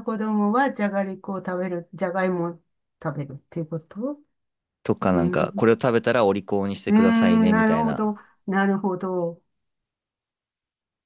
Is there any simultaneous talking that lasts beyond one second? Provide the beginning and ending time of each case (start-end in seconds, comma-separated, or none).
6.8-8.2